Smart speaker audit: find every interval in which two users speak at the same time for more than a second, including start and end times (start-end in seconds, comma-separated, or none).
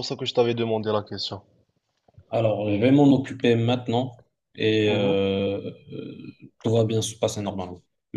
none